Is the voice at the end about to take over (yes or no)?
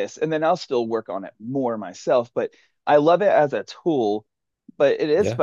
no